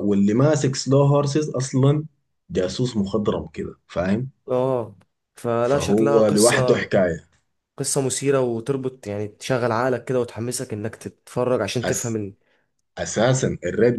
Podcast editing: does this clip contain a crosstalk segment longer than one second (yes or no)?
yes